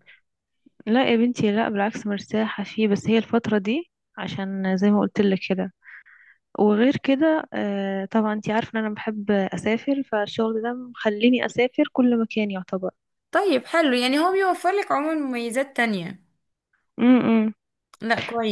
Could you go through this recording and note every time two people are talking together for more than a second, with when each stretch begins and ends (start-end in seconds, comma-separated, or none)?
none